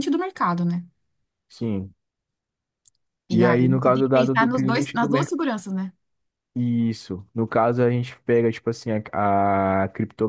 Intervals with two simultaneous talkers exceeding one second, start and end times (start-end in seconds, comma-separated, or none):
3.3-5.3